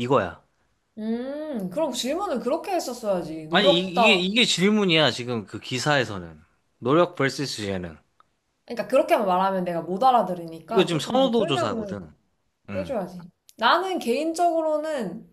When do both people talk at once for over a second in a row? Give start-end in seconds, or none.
10.7-11.9